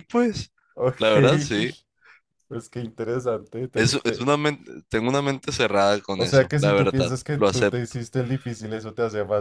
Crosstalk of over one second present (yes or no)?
yes